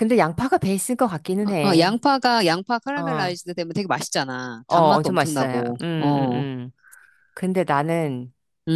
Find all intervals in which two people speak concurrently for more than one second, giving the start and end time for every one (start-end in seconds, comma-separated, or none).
4.7-6.4